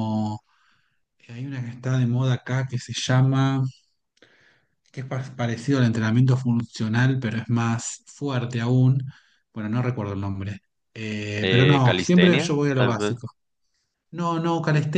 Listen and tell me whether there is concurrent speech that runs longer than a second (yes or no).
yes